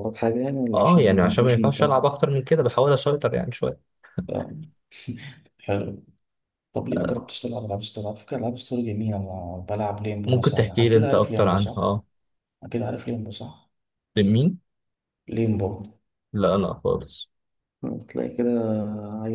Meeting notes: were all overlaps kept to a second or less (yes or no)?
no